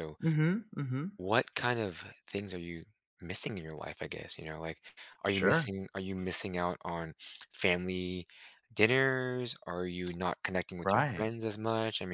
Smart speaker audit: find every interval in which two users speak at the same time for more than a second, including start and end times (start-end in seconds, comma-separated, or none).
none